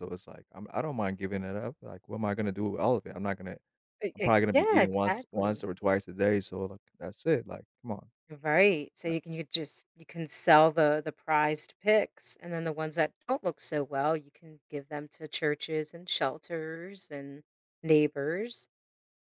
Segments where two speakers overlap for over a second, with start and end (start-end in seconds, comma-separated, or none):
4.1-5.6